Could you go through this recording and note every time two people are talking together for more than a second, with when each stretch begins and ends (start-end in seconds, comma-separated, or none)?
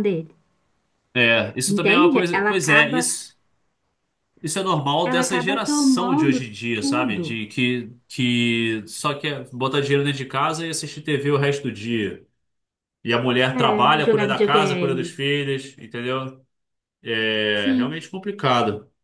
1.7-3.1, 5.0-7.4, 13.5-15.2